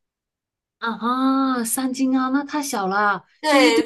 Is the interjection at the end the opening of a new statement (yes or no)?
yes